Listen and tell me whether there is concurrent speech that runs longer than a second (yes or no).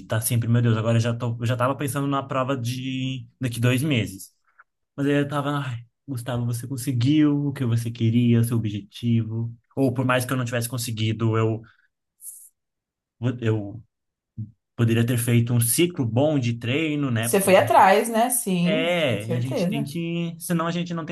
yes